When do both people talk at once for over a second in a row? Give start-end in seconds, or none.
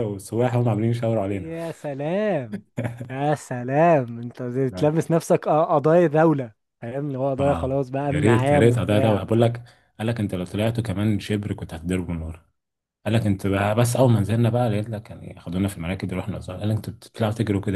7.4-9.2